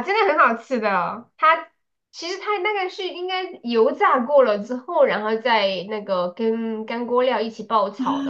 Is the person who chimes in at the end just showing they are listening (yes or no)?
no